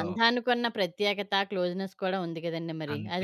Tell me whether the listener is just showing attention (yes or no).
yes